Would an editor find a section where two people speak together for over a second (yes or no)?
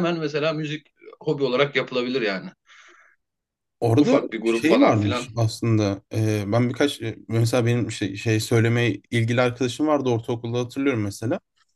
yes